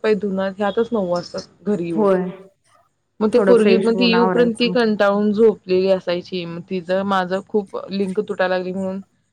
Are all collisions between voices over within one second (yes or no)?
no